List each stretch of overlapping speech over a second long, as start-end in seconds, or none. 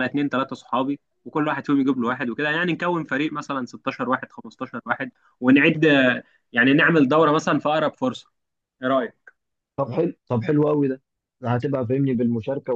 none